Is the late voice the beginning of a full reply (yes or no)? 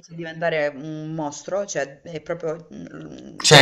yes